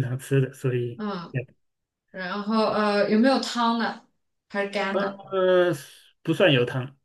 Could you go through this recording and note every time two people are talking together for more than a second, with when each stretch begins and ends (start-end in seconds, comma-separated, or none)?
none